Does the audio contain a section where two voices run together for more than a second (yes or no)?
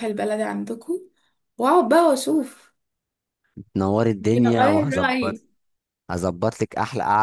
yes